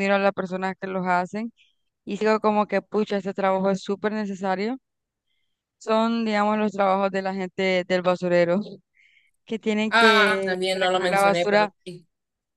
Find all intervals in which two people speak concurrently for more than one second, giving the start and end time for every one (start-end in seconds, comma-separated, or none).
9.9-11.7